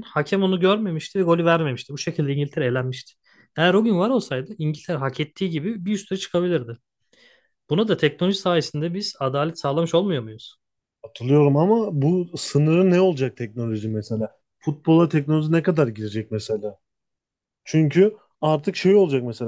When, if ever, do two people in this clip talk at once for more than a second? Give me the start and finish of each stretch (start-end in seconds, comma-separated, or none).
none